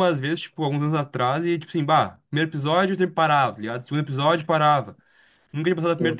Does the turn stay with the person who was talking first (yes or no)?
yes